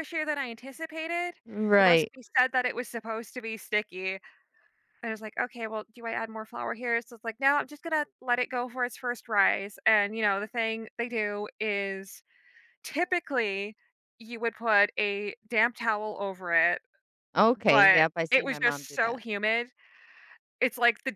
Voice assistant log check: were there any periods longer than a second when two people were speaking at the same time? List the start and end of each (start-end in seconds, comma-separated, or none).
17.7-19.2